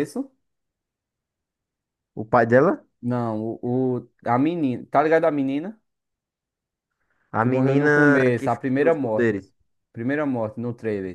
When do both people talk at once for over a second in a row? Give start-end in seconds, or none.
7.4-9.4